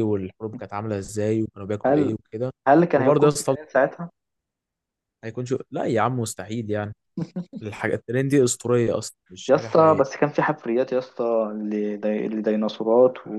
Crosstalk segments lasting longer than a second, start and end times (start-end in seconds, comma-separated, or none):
none